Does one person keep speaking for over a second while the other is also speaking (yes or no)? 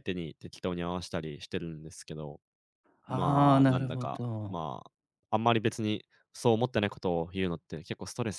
yes